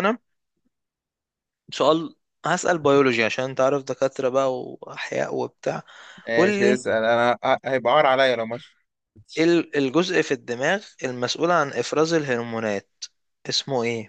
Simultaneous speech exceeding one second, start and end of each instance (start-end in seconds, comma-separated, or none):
none